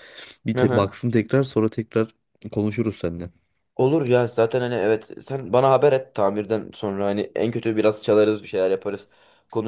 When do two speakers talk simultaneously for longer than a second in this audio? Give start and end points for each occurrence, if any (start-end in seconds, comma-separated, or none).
none